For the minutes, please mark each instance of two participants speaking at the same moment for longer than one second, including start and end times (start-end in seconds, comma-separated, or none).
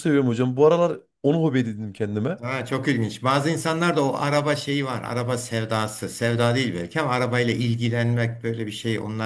none